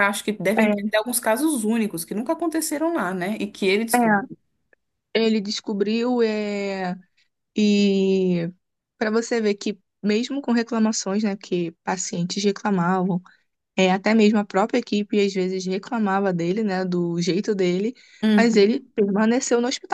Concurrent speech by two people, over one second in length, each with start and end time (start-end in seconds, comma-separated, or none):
none